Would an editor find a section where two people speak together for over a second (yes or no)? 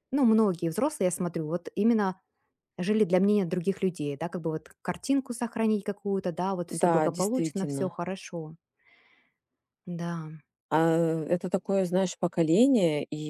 yes